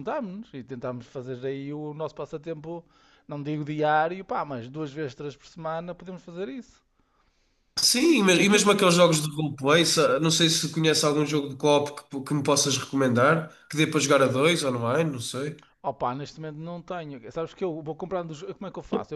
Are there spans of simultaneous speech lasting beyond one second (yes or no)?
no